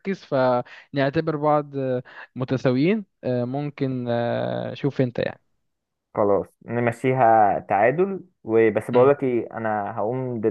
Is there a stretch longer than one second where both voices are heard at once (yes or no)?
no